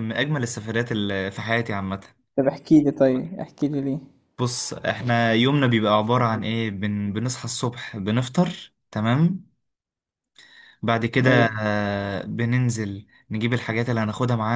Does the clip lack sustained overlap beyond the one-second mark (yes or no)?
yes